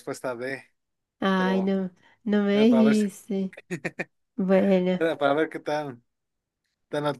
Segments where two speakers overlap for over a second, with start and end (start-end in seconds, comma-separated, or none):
none